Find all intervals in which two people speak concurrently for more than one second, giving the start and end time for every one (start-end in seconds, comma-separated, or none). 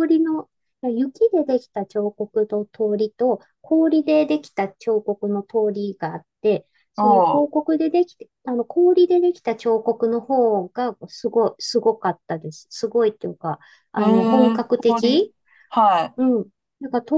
14.0-15.3